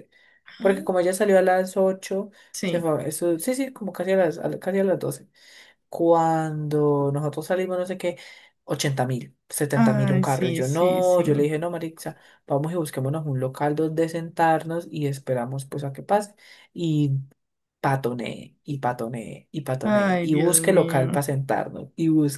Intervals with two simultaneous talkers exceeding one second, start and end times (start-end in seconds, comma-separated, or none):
9.8-11.2, 19.8-21.2